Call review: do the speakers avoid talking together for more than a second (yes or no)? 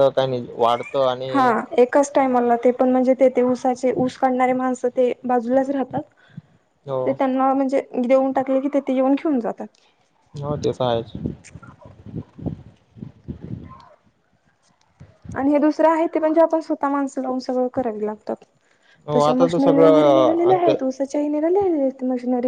no